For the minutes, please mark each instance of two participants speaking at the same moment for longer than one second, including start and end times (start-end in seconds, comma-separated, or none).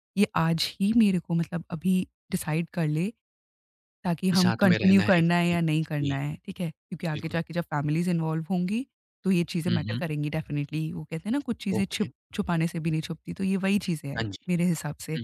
4.3-6.1